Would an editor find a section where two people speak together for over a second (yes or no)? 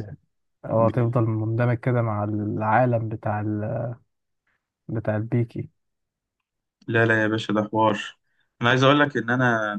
no